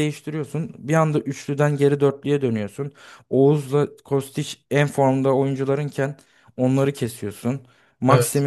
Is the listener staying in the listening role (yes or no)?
yes